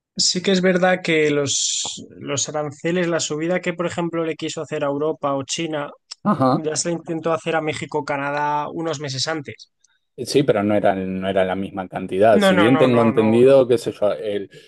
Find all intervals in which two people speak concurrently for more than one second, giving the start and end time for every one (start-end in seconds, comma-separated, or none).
12.3-13.7